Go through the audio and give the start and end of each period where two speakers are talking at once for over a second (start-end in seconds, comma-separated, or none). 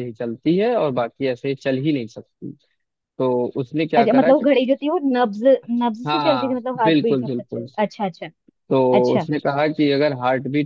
6.1-7.7